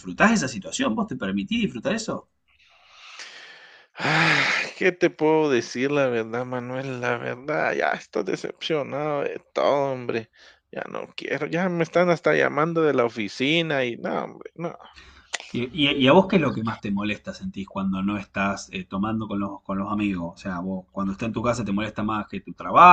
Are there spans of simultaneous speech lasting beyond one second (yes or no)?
no